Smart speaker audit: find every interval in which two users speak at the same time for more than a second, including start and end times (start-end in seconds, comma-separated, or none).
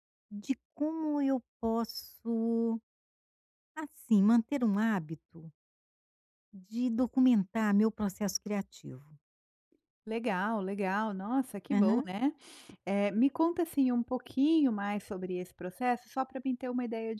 none